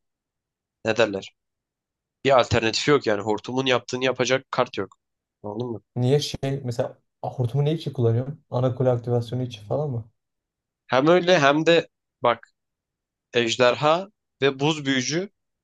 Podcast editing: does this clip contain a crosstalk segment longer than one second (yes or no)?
no